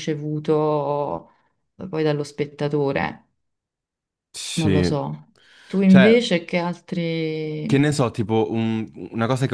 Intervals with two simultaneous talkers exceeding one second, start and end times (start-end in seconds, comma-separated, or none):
none